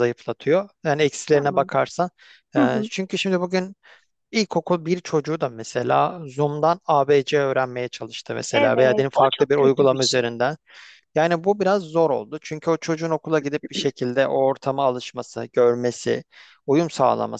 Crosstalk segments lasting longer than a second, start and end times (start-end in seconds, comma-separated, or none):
8.5-10.3